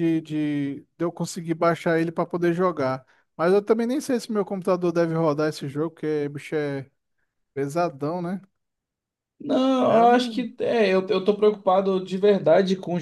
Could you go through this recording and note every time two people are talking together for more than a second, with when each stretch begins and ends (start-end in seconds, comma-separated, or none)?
none